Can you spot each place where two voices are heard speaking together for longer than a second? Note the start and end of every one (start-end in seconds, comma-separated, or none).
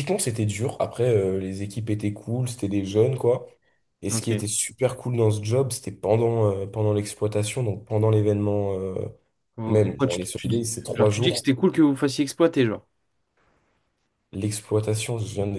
9.7-11.4